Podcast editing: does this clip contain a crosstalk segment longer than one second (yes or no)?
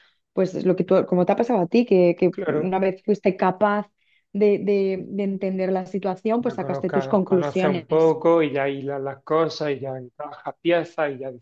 yes